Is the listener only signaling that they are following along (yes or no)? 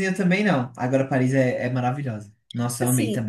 no